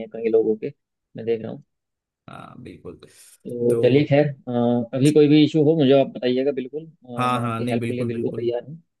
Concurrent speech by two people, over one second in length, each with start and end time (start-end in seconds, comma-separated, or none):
7.2-8.5